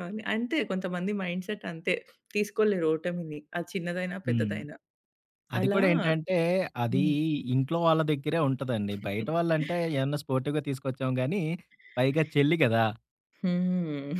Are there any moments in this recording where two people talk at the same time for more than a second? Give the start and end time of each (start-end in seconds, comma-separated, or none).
none